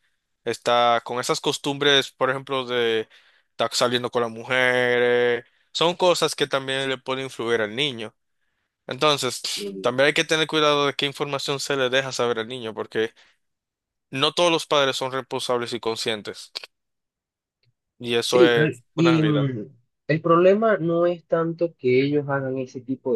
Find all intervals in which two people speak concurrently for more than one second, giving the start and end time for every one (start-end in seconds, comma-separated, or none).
18.2-19.5